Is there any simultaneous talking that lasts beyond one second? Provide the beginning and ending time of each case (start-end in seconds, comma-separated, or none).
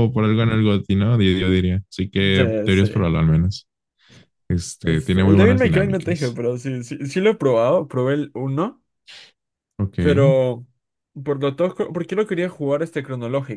4.8-6.4